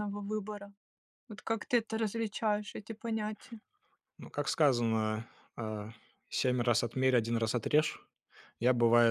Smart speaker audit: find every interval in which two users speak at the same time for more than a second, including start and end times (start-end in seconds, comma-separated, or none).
none